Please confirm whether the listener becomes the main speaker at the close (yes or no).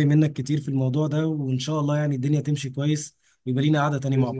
yes